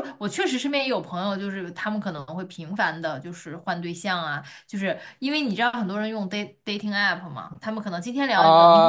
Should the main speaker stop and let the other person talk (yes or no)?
yes